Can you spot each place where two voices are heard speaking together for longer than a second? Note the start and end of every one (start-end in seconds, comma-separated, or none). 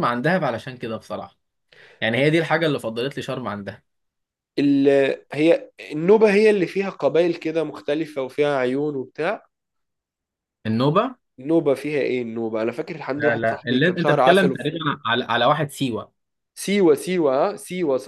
13.1-14.6